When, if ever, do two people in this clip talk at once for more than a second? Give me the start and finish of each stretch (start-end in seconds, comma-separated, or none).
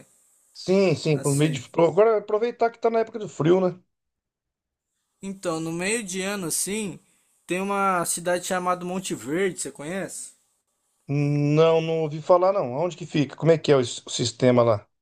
none